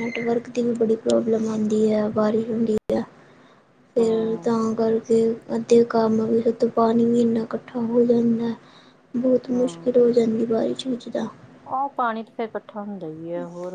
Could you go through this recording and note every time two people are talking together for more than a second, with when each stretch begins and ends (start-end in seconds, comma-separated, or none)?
none